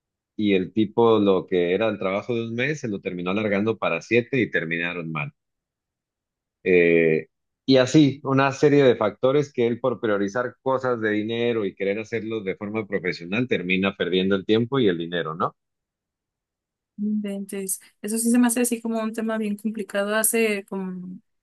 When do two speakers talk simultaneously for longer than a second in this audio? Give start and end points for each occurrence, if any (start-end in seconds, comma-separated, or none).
none